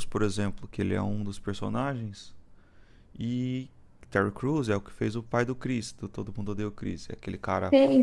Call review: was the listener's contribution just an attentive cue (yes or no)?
no